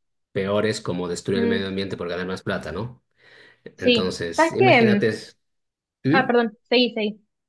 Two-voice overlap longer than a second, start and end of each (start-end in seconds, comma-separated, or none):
3.8-5.1